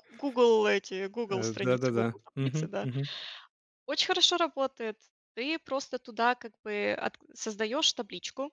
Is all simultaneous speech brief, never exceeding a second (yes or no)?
no